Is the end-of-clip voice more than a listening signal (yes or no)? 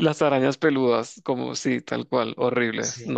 yes